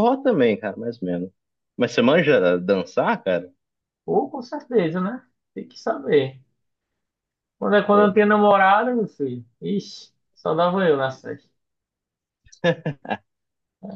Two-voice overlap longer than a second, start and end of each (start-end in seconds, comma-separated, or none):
none